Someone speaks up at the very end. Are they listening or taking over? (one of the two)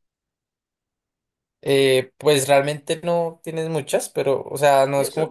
taking over